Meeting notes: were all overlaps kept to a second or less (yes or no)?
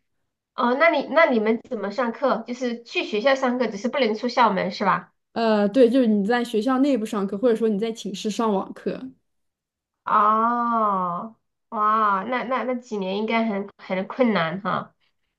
yes